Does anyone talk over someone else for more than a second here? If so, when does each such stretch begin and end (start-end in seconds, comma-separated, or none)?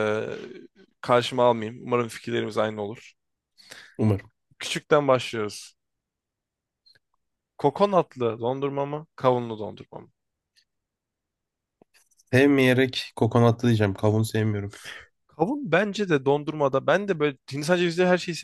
none